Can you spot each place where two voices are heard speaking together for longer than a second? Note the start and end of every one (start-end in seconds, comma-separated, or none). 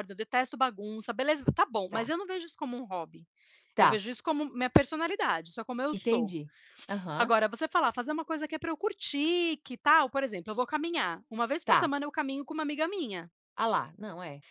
none